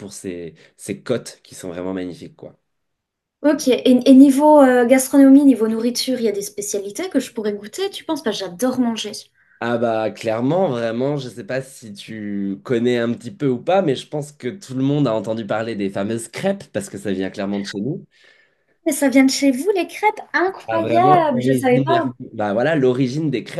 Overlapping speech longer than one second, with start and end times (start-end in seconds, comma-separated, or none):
20.7-22.1